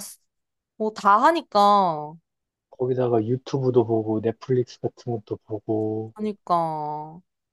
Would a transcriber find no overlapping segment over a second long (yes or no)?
yes